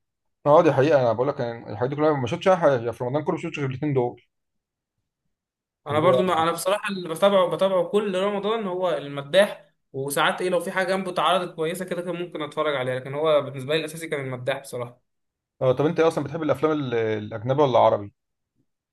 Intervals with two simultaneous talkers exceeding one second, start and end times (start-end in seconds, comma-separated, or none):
none